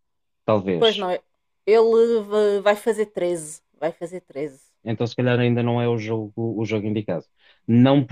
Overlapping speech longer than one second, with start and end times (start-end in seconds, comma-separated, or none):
none